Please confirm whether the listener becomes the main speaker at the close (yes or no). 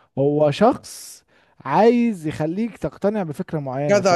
yes